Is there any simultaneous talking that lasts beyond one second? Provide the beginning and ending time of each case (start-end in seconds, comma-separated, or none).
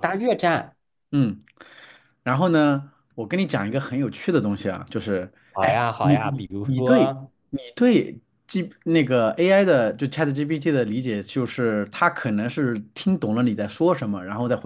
5.5-7.1